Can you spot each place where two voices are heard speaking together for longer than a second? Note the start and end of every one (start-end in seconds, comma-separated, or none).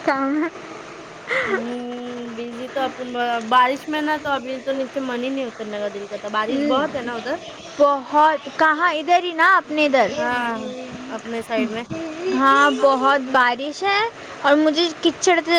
none